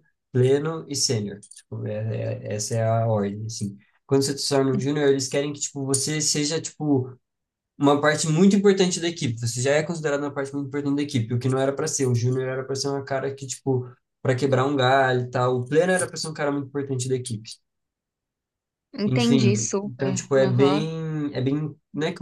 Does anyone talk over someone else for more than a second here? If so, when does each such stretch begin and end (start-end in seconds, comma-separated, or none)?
19.1-20.9